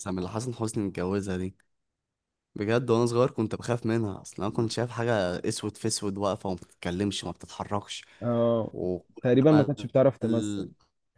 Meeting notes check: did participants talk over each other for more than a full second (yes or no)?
no